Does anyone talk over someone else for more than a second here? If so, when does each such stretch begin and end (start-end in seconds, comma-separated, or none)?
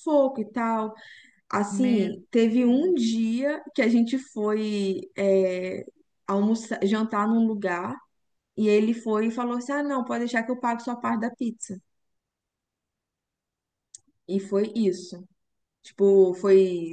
1.7-3.2